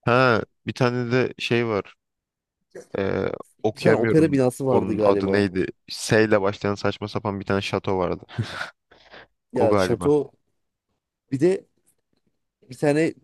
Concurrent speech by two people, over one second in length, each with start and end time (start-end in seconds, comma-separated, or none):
3.8-5.5